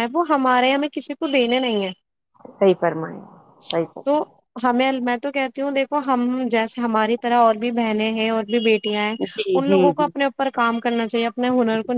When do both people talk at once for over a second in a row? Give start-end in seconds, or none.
none